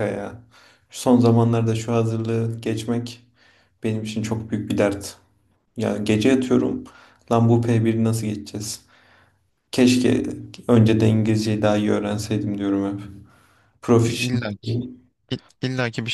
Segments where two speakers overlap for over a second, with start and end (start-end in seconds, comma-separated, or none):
none